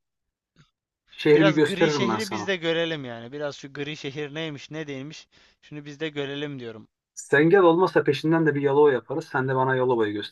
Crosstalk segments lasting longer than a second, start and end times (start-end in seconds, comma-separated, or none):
1.3-2.5